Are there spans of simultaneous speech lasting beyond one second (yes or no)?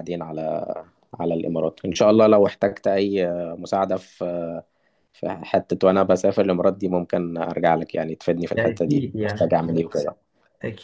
yes